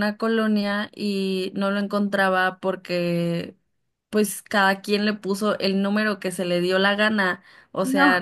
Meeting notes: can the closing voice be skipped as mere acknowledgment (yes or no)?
yes